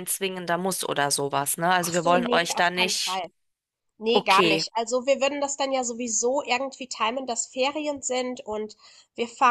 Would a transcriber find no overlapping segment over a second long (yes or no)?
no